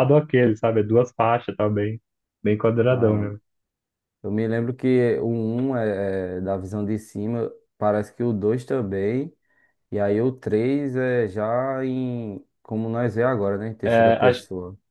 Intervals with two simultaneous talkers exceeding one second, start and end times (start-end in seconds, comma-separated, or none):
none